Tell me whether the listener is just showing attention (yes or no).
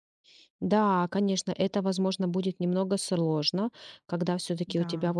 yes